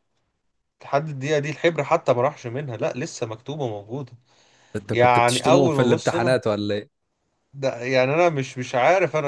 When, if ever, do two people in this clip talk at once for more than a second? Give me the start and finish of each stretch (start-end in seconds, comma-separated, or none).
4.9-6.4